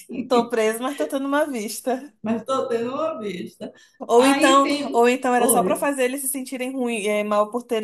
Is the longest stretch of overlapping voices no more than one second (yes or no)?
no